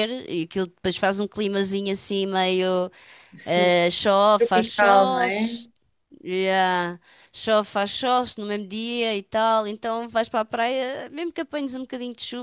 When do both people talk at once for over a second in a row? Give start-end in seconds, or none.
4.4-5.6